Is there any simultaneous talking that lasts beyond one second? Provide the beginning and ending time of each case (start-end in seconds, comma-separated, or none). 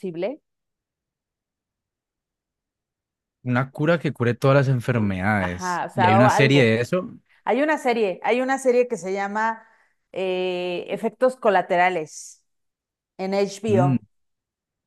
5.4-6.7